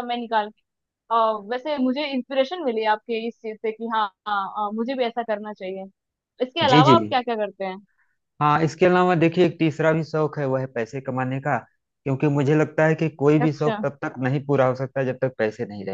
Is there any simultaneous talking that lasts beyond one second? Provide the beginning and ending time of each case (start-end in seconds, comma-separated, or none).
none